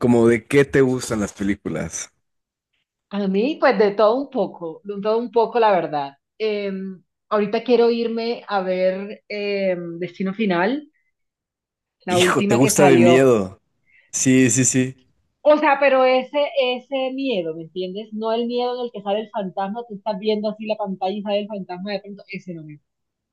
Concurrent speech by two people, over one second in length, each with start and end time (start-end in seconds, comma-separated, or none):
12.1-13.3